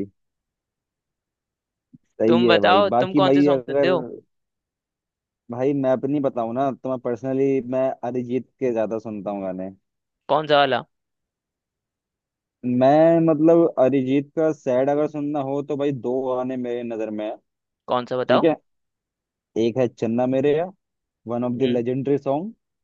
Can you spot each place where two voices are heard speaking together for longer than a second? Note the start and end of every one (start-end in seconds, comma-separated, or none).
2.3-3.9